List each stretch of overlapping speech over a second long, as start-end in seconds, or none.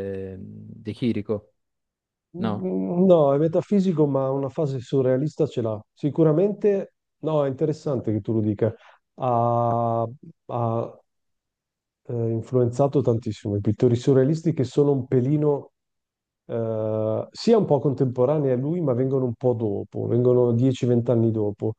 none